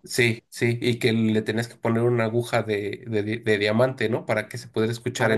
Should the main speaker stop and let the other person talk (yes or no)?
yes